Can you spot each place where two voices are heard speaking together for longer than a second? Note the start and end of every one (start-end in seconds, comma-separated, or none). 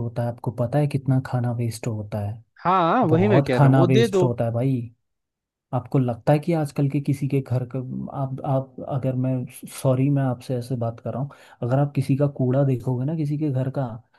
3.1-4.3